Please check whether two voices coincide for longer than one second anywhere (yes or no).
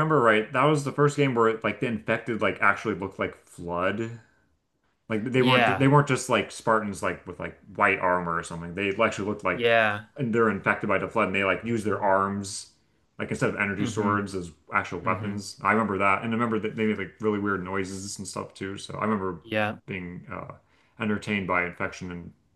no